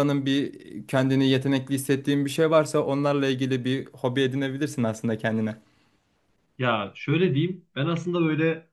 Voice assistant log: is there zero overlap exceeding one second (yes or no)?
yes